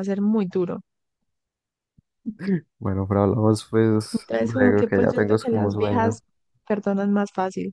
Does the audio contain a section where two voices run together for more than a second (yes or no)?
yes